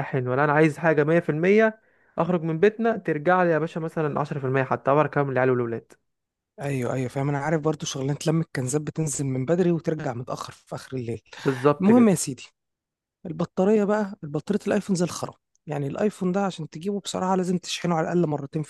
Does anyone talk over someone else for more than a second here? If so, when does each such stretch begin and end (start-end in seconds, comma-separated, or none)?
none